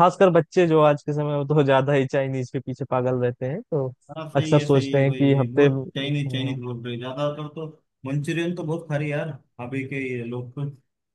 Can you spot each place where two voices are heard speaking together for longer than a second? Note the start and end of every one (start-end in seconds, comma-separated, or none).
4.4-6.6